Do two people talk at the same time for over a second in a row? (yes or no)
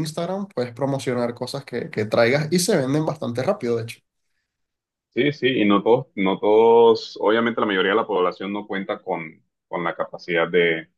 no